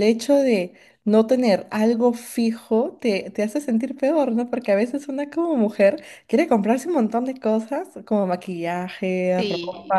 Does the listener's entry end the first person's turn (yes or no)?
no